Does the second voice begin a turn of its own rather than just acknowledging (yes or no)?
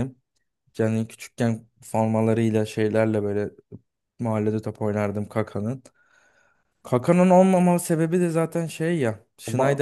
no